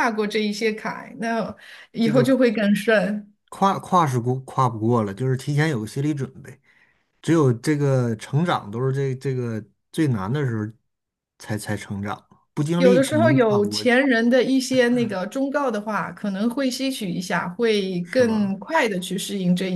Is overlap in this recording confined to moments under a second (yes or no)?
no